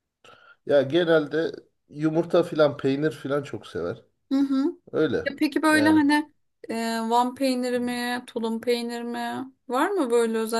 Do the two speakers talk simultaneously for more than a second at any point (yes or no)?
no